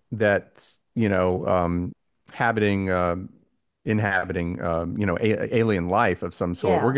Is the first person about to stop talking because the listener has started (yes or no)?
no